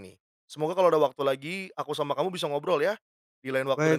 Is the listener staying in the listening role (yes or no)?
no